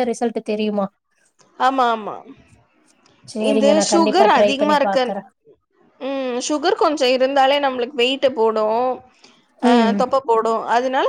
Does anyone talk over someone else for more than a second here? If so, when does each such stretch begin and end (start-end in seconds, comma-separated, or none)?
3.5-5.1